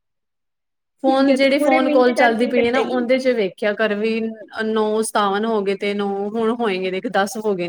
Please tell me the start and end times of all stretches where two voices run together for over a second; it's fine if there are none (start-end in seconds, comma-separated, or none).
1.0-3.0